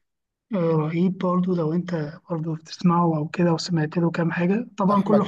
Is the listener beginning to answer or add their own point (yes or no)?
yes